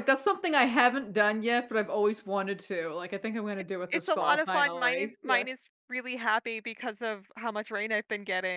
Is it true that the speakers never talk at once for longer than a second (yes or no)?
no